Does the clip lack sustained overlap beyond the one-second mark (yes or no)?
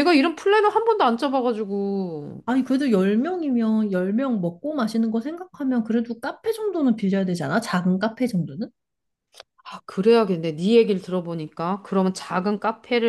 yes